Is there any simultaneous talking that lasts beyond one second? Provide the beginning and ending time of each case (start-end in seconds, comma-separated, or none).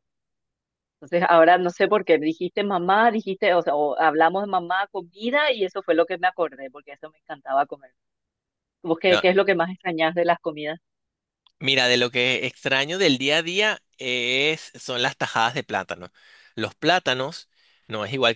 none